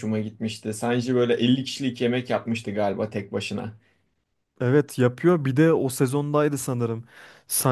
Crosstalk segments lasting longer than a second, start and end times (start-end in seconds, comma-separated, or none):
none